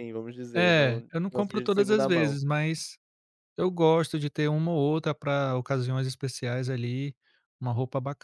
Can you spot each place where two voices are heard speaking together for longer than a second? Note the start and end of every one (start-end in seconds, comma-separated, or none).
0.5-2.4